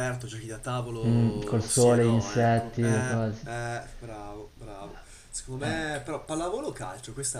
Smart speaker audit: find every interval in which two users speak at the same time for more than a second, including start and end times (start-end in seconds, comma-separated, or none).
1.0-3.5